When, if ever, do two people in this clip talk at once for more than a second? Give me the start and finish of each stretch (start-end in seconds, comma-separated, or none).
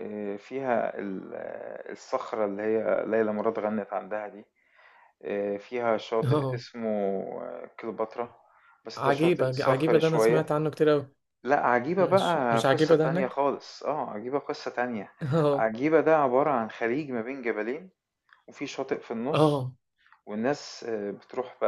8.9-10.5, 12.0-13.4